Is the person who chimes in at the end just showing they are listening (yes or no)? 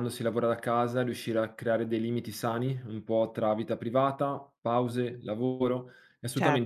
yes